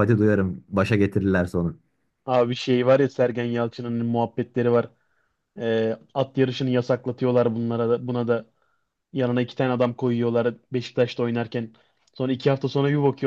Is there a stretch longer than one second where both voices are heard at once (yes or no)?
no